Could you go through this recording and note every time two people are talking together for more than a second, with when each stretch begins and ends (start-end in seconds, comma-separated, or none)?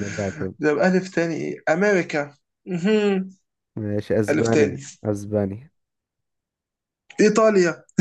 none